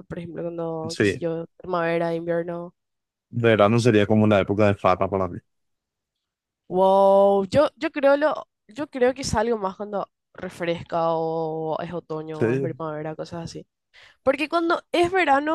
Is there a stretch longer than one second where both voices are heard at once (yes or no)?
no